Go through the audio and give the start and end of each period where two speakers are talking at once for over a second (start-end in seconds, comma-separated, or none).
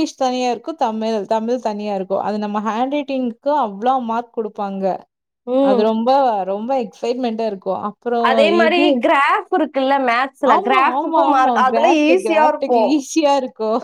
10.5-12.8